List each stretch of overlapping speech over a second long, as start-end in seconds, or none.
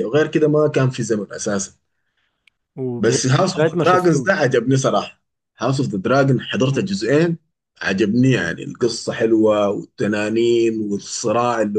3.0-4.5